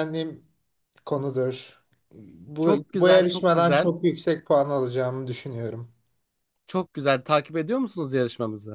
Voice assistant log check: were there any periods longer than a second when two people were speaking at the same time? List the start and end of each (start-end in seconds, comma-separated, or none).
2.6-3.9